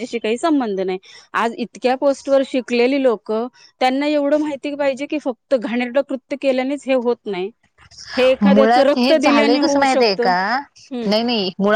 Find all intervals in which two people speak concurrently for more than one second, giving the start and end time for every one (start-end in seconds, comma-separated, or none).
8.5-10.3